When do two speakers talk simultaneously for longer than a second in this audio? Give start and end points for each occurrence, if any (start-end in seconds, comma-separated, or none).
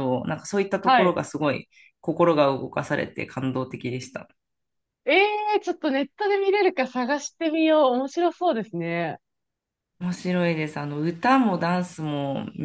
none